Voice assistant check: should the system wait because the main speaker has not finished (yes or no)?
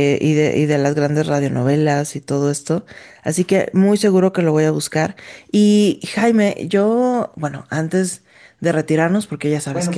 no